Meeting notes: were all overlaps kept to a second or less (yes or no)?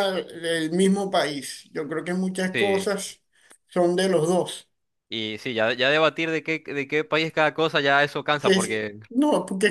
yes